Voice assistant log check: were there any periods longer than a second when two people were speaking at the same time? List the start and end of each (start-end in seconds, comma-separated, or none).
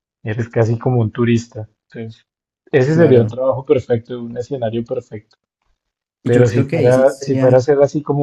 6.2-7.7